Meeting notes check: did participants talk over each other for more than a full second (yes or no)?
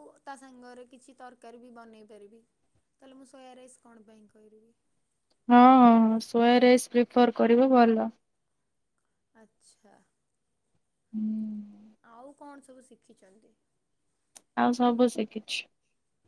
no